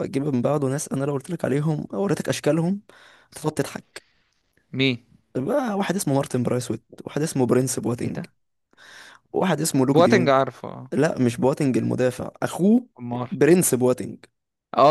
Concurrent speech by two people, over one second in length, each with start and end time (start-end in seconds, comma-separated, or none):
none